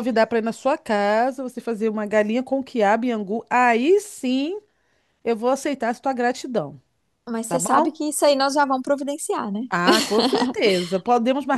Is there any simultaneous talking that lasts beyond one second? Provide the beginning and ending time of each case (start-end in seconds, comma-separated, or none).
none